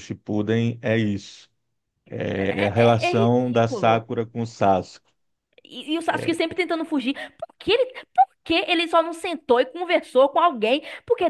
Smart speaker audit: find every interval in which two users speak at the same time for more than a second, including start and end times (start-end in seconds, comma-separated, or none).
2.4-4.0